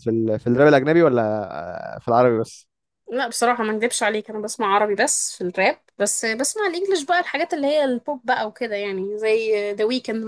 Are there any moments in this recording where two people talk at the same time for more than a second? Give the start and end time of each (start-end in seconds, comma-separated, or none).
none